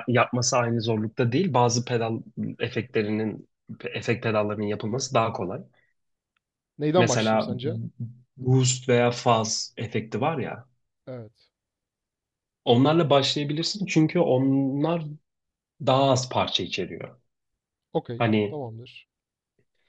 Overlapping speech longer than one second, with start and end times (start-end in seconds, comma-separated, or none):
none